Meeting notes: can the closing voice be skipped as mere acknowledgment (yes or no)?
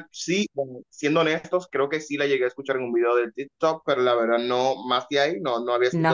no